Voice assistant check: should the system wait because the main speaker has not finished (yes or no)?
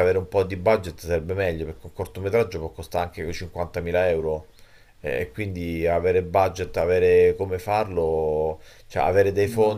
yes